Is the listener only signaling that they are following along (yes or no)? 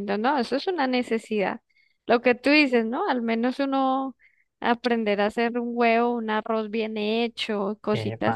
yes